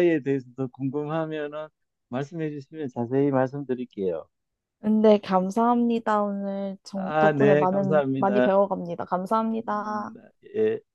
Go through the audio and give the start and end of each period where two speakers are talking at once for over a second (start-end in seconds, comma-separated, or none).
6.9-8.5